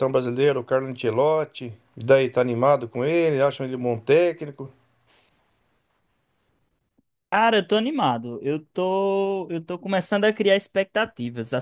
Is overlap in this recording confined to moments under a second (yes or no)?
yes